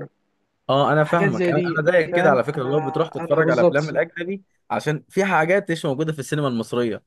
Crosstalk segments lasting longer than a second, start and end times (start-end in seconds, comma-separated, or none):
1.0-3.9